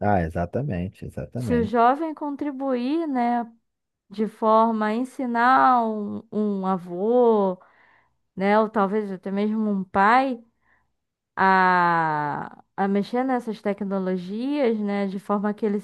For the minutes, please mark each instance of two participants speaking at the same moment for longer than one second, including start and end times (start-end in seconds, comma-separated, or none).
none